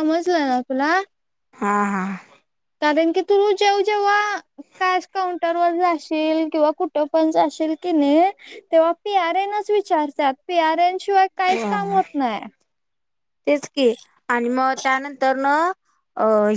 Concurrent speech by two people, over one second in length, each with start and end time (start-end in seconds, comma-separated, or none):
none